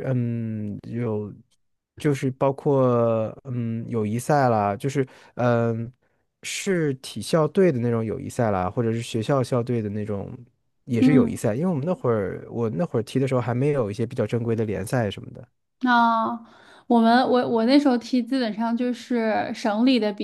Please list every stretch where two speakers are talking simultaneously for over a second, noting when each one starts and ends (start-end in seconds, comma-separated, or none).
none